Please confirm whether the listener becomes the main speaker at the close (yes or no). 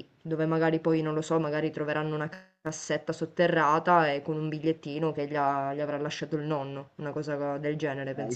yes